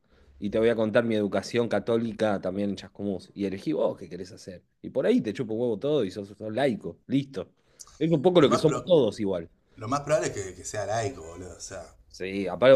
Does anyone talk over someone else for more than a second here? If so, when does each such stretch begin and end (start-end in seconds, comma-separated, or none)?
none